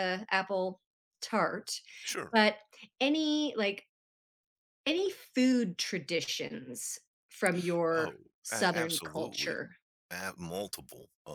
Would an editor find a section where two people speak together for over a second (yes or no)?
yes